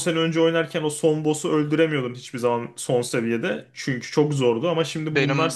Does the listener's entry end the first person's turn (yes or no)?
yes